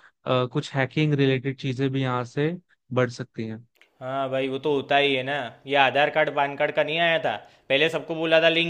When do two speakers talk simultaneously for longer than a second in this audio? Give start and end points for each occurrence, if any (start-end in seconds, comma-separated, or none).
none